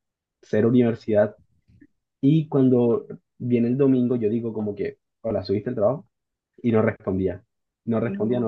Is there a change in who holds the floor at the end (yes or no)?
no